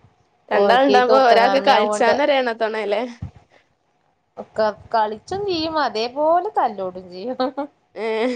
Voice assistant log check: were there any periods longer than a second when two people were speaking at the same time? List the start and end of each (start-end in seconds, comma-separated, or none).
0.6-2.1